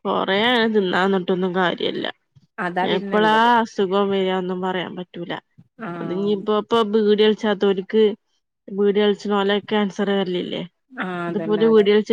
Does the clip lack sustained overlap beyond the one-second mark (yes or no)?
yes